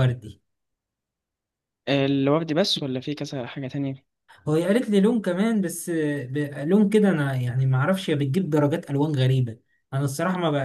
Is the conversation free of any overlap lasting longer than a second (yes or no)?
yes